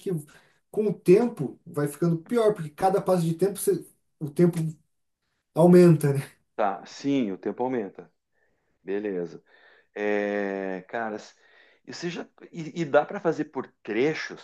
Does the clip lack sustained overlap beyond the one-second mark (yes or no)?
yes